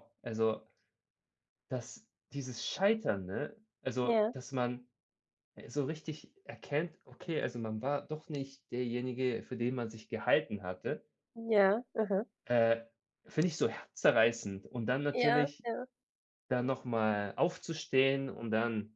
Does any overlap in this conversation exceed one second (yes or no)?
no